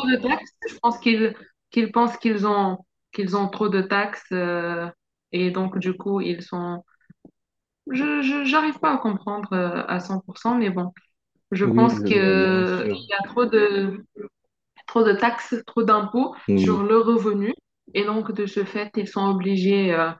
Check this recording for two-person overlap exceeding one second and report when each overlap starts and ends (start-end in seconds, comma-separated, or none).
11.6-13.0